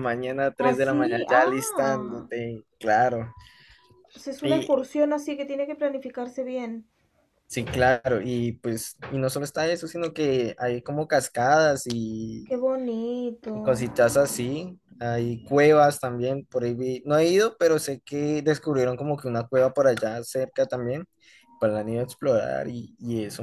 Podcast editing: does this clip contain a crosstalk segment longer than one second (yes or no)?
yes